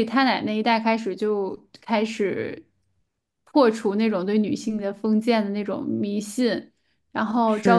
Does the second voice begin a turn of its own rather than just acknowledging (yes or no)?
yes